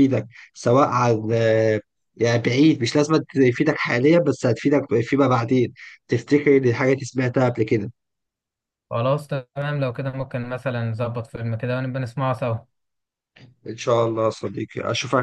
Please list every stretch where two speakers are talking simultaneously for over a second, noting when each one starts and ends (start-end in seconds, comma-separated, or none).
none